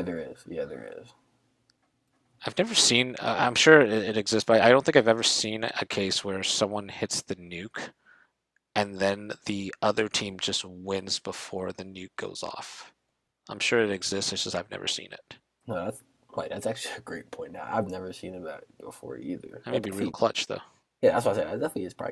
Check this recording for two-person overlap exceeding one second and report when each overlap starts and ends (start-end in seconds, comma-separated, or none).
none